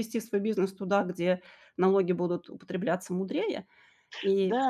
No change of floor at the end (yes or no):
no